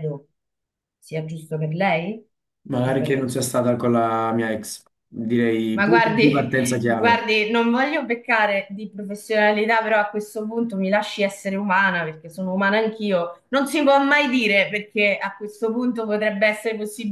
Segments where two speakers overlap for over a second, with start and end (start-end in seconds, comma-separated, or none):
5.7-7.2